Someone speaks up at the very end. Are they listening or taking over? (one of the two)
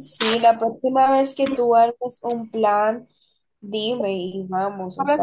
taking over